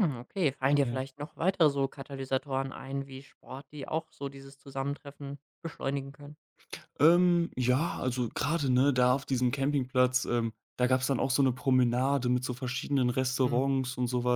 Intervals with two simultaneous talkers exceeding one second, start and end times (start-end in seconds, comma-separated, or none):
none